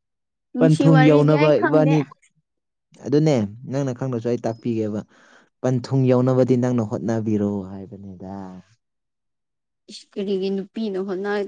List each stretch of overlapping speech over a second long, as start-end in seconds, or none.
0.6-1.9